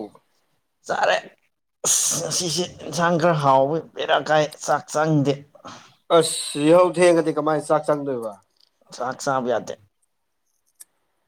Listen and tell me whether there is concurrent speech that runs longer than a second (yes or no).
no